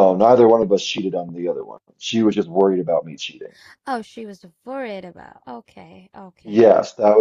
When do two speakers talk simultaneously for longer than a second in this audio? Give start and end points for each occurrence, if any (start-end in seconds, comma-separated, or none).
none